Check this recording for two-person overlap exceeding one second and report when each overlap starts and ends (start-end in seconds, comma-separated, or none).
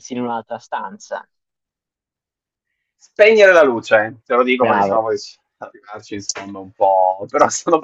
none